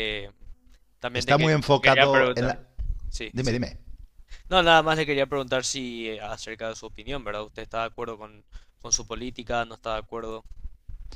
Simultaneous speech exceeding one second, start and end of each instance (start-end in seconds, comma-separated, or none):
1.1-2.6